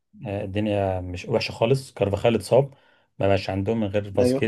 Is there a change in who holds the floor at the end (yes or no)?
no